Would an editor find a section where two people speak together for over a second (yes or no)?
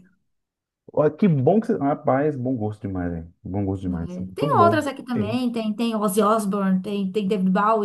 yes